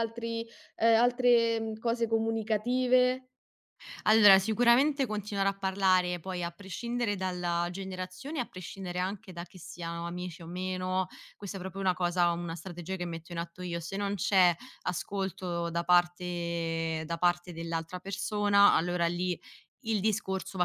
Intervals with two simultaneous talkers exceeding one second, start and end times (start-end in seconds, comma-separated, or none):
none